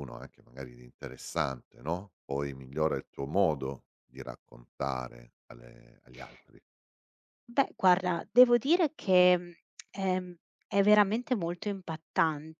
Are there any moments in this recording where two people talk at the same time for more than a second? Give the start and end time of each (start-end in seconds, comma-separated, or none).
none